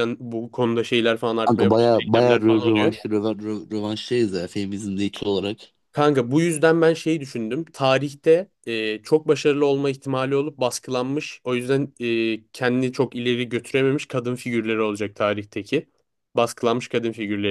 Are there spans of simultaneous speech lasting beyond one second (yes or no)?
yes